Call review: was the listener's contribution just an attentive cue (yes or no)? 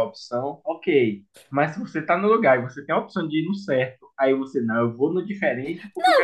no